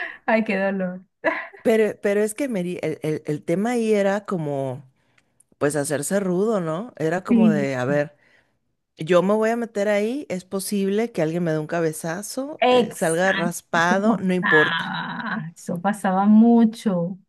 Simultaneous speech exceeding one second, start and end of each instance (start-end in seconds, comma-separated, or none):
12.6-15.0